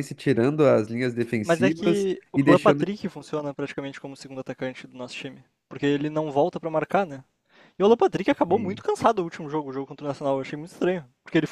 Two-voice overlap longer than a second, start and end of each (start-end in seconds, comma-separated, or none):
1.4-2.9